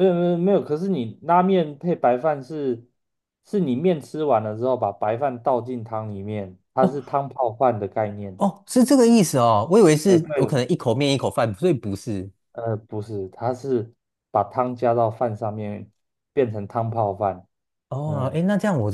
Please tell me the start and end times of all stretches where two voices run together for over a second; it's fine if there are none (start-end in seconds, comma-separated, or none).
none